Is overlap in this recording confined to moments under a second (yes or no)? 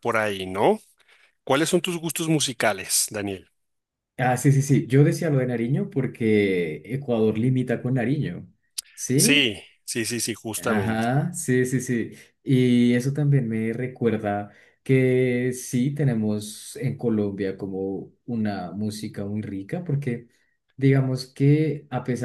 yes